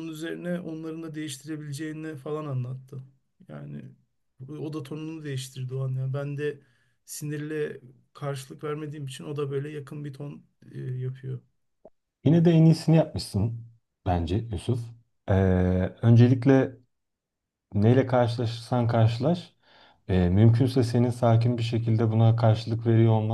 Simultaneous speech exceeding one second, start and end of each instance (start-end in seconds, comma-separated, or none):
none